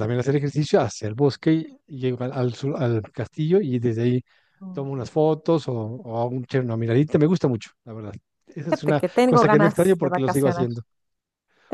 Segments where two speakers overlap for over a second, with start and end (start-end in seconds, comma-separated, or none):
8.7-10.7